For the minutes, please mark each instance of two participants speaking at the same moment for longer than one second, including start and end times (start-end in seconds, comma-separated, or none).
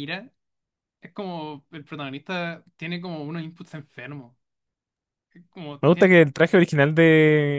none